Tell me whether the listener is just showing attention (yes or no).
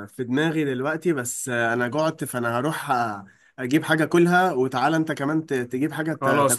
no